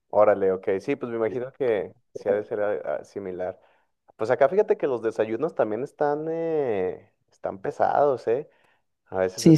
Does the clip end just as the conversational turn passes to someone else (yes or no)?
yes